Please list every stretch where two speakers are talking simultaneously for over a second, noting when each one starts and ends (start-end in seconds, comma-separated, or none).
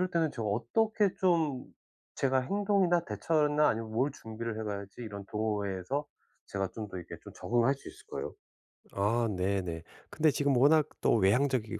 none